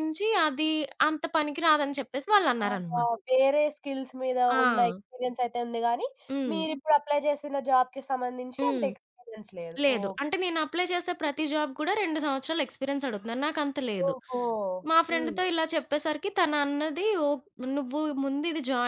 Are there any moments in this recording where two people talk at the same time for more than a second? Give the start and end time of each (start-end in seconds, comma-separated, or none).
none